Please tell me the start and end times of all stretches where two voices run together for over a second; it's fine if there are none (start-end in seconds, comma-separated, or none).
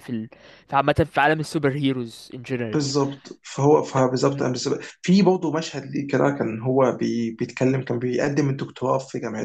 none